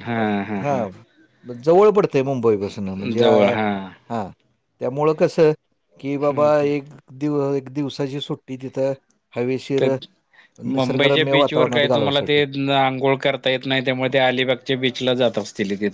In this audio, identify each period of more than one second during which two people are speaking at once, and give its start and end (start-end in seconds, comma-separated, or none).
10.8-12.4